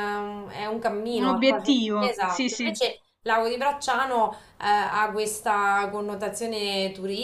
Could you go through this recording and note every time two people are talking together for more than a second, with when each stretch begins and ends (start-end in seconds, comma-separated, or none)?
1.1-2.8